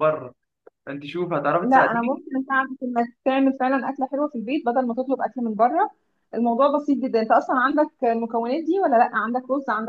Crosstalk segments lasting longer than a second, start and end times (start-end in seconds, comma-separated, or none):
none